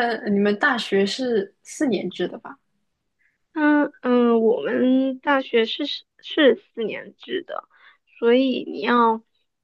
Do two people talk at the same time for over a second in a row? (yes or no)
no